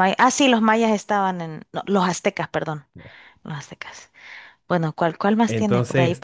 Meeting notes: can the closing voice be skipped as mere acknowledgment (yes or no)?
no